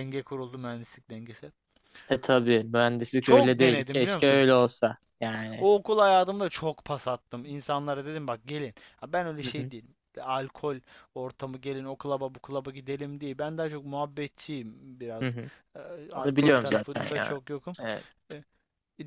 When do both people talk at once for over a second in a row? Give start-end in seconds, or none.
3.2-4.5, 16.1-17.4